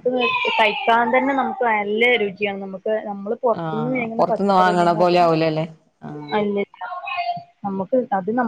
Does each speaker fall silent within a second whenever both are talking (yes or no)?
no